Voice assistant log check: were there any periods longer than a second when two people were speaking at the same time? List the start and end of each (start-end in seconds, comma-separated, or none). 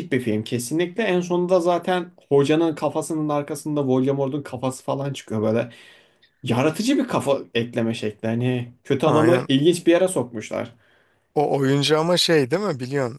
none